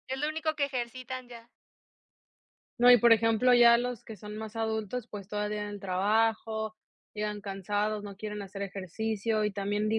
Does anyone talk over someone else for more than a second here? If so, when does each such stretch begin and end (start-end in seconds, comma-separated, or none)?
none